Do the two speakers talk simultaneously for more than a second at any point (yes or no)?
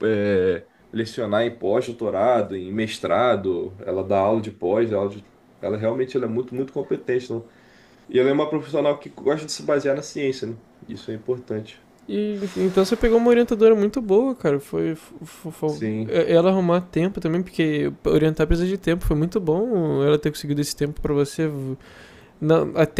no